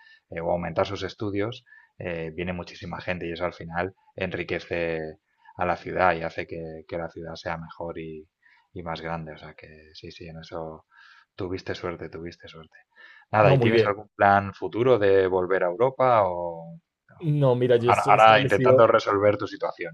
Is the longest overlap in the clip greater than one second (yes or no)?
yes